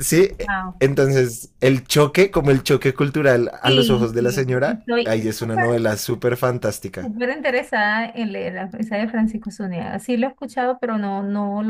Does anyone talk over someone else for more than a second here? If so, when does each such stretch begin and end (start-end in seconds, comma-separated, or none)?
3.6-5.7